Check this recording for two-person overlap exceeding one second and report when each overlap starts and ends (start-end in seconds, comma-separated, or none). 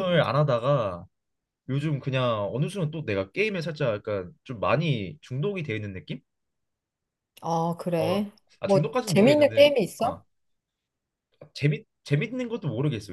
8.0-10.2